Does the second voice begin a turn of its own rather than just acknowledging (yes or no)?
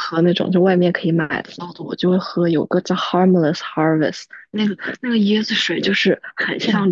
no